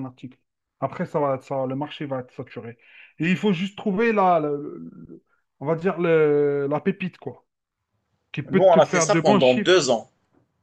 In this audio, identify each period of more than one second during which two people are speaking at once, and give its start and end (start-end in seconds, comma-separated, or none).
8.5-9.7